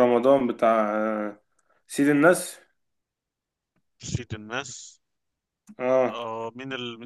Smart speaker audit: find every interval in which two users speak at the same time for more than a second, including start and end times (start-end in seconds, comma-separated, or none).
none